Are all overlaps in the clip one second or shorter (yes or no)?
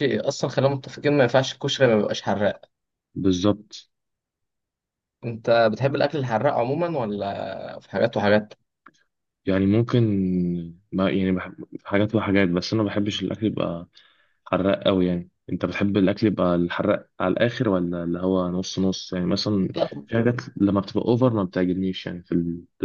yes